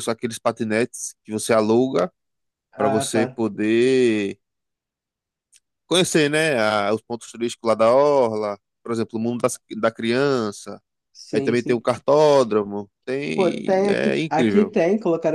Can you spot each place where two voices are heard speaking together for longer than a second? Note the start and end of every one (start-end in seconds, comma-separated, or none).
13.3-14.7